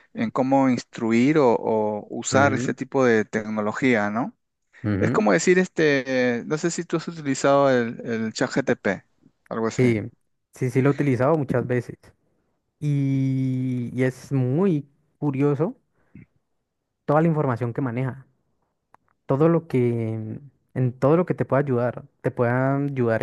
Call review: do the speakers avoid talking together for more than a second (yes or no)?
yes